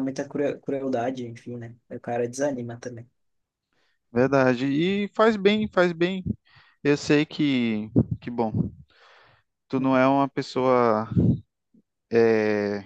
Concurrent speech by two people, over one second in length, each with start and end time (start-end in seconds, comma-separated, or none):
none